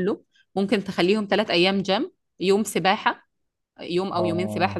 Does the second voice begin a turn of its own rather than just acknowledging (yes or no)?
no